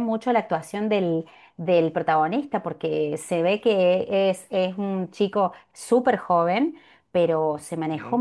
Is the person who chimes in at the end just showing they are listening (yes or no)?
yes